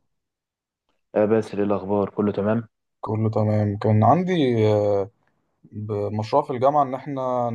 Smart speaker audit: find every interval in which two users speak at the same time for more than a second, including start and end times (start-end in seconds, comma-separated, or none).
none